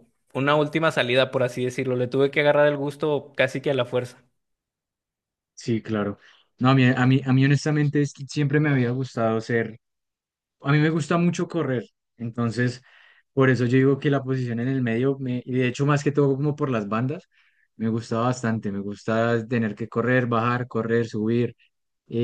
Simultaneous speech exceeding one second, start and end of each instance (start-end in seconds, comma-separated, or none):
none